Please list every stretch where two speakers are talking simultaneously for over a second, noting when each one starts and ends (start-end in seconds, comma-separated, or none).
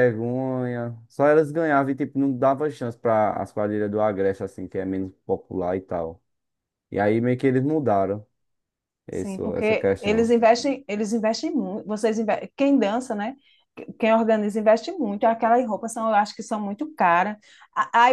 9.1-10.3